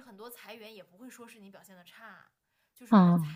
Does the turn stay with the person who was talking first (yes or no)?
yes